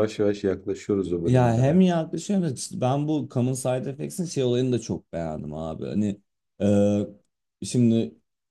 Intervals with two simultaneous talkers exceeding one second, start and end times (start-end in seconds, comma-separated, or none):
none